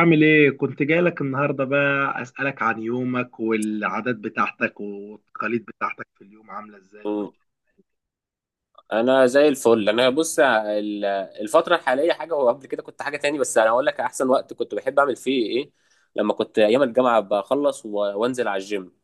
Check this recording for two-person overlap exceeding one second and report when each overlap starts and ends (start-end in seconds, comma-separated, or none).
none